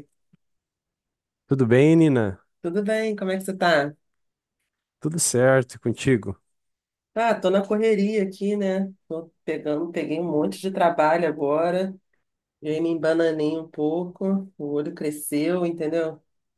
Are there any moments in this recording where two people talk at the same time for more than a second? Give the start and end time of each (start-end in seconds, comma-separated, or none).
none